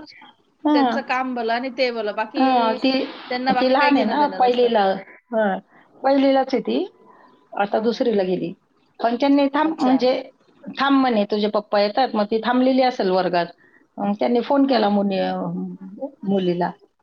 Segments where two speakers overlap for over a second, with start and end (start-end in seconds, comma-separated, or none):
3.3-4.7